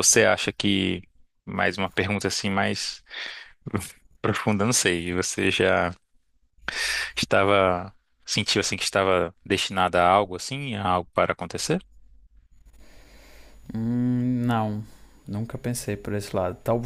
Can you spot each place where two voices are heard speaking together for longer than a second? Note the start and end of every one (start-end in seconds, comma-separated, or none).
none